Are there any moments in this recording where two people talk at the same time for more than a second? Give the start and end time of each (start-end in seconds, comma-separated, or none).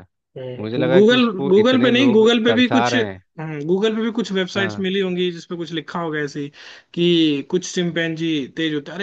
0.6-3.0